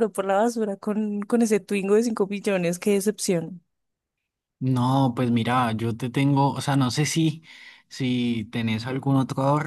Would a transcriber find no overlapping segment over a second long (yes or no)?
yes